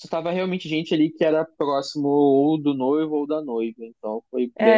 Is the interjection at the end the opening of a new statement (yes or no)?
yes